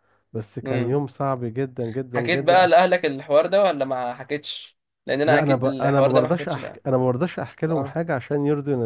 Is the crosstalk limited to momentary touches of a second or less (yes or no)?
no